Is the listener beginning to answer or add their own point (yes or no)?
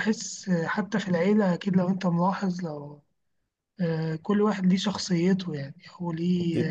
no